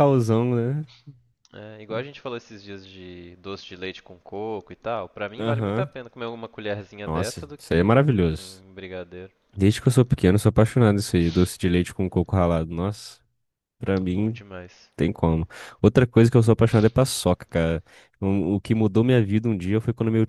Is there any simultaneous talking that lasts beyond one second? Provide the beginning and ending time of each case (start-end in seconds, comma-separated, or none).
7.0-8.6